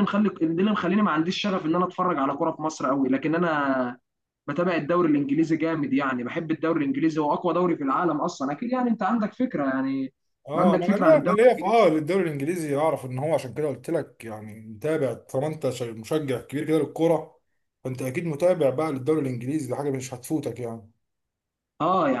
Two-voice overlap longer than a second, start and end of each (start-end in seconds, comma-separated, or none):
10.6-11.9